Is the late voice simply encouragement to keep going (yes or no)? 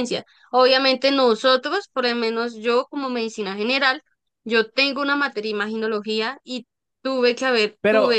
no